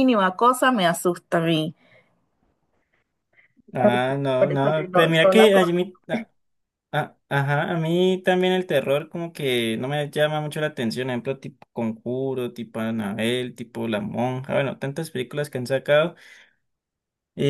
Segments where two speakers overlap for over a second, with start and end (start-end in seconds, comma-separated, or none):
3.8-5.5